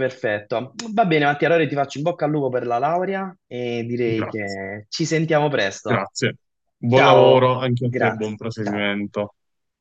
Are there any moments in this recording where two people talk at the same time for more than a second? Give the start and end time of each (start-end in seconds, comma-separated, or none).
6.8-8.9